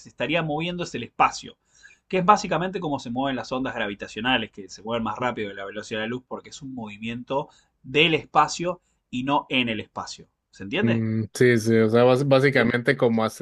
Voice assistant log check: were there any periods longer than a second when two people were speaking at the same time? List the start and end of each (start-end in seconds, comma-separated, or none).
none